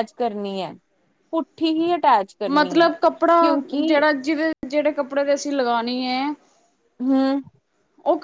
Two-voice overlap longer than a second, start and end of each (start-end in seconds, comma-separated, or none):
2.5-4.0